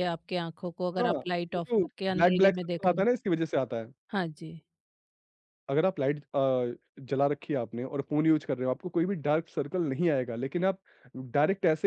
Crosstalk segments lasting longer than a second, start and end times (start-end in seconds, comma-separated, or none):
1.0-3.0